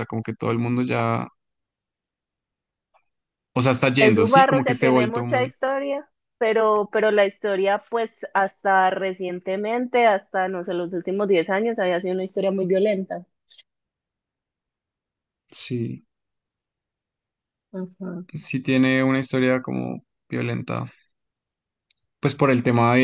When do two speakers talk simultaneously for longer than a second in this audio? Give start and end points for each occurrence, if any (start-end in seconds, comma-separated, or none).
4.0-5.5